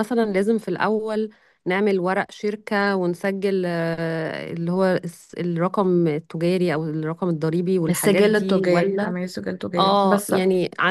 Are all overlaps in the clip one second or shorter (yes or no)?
no